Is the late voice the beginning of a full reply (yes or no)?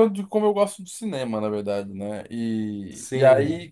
no